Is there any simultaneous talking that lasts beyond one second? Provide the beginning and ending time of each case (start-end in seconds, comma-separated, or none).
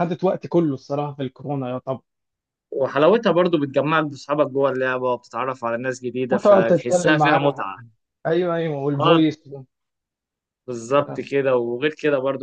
6.3-7.6